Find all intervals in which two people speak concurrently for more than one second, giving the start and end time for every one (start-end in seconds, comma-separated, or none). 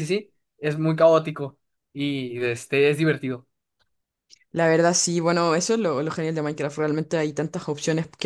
none